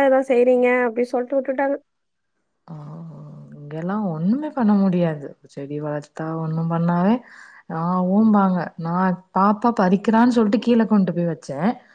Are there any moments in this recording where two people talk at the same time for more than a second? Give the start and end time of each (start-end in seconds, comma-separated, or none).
none